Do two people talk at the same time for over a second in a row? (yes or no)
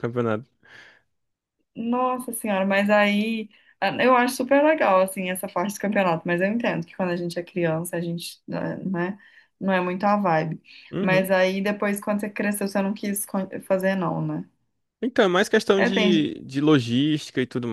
no